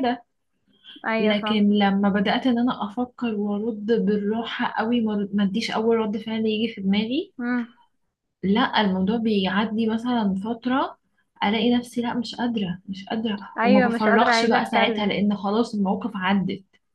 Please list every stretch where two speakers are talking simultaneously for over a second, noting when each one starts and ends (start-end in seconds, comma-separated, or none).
13.6-15.2